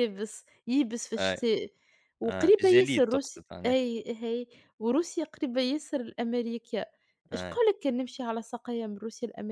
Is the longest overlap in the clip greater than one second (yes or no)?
yes